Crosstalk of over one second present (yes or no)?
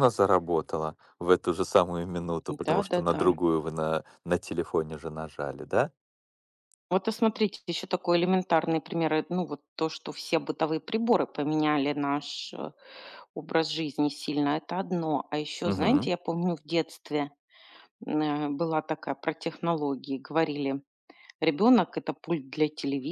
no